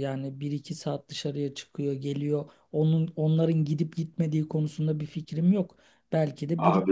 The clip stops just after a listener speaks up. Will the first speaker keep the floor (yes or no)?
yes